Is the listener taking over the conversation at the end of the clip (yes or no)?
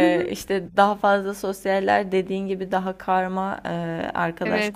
yes